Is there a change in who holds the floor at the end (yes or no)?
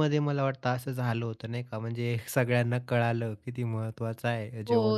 yes